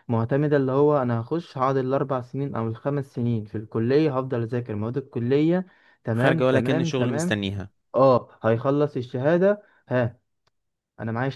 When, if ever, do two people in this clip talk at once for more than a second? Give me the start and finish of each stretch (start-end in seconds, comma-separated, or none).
6.1-7.3